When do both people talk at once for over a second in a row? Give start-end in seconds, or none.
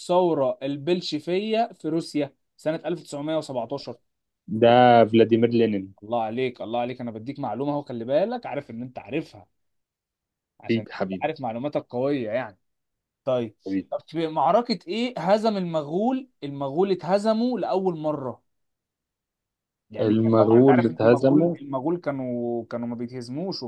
20.0-21.6